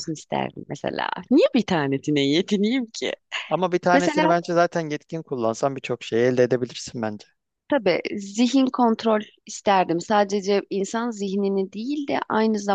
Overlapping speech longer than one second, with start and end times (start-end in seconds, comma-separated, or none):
none